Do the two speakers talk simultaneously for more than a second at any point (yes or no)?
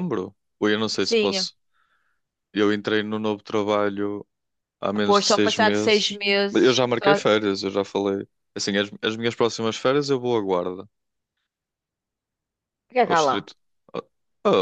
yes